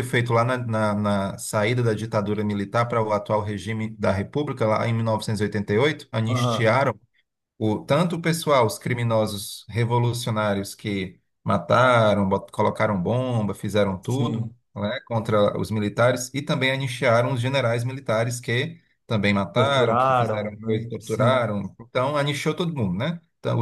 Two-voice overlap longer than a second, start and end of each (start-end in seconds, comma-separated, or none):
19.5-21.5